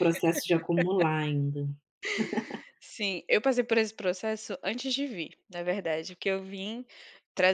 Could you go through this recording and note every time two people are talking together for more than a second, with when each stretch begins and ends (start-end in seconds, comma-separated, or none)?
none